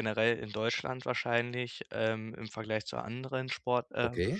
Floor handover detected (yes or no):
no